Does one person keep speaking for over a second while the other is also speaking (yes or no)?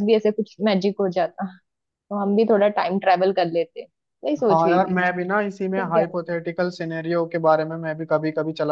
no